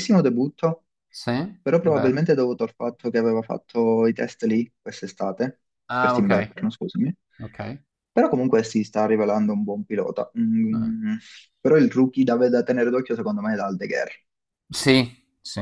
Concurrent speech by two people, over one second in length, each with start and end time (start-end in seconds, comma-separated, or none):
none